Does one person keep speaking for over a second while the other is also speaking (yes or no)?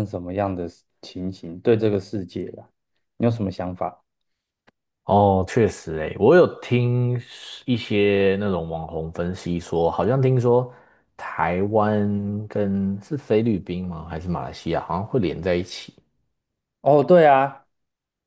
no